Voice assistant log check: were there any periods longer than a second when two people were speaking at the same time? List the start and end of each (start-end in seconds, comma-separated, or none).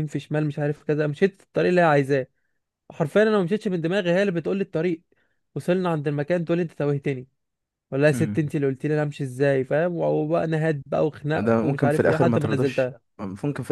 11.3-13.0